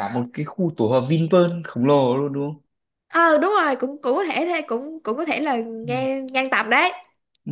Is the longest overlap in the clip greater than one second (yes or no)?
no